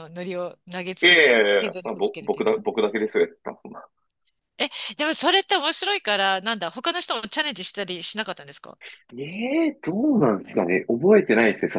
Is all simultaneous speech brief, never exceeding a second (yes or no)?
no